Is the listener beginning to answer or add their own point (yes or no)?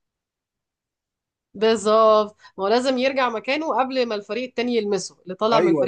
yes